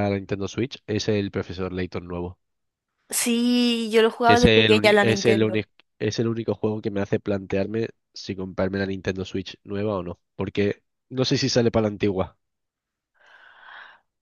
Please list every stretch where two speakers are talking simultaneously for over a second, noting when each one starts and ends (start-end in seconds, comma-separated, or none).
4.2-5.7